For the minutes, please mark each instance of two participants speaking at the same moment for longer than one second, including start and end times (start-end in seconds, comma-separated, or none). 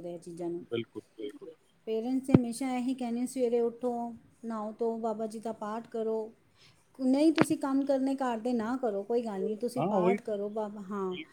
none